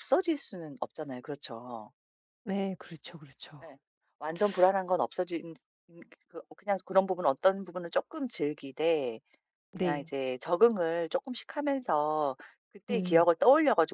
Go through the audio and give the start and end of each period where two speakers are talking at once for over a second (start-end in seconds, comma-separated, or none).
none